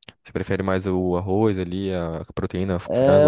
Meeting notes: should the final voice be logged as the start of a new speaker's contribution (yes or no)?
yes